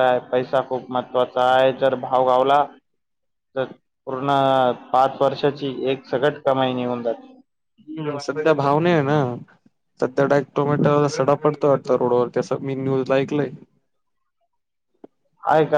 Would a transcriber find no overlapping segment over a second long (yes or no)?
yes